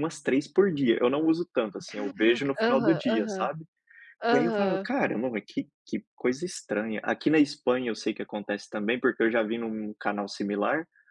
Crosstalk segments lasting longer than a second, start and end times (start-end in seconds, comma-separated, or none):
1.9-3.5